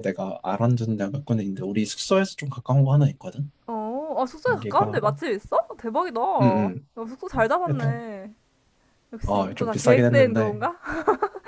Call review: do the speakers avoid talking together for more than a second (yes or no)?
no